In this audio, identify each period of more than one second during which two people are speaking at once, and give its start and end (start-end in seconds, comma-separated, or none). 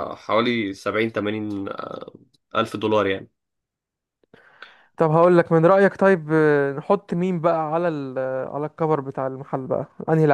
none